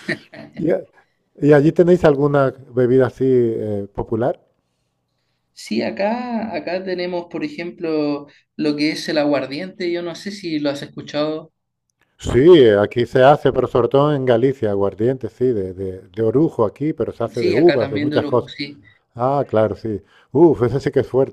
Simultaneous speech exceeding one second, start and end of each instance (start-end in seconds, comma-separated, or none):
17.3-18.5